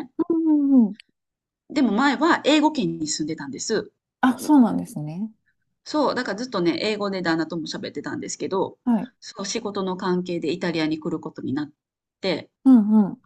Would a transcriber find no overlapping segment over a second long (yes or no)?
yes